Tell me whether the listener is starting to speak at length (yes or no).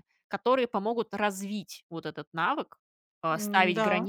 no